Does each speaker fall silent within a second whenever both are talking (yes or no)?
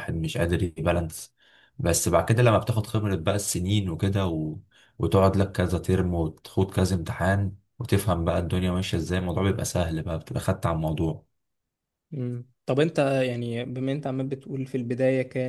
yes